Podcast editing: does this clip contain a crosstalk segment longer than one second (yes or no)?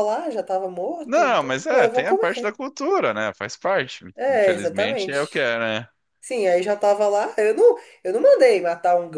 yes